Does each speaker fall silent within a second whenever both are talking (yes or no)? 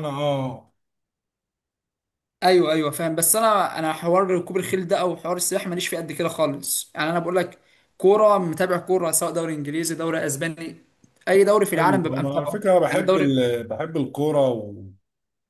no